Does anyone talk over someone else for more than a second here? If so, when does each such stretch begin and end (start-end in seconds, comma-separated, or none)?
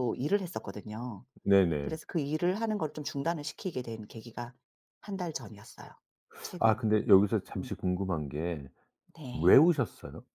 none